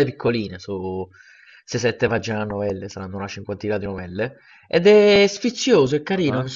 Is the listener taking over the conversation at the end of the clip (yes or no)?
no